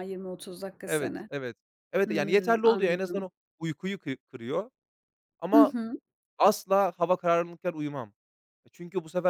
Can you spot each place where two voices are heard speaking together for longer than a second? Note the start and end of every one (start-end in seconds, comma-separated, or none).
2.0-3.3